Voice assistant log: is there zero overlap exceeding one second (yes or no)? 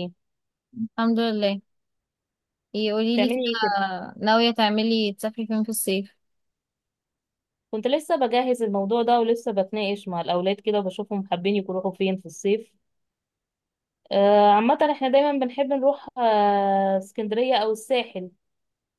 yes